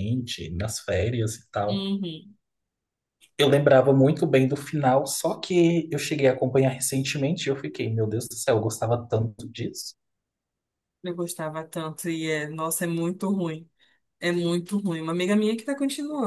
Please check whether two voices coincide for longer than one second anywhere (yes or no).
no